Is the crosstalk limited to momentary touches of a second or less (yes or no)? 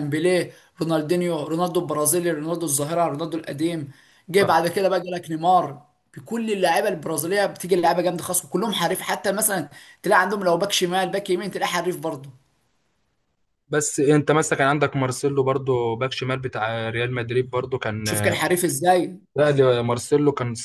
yes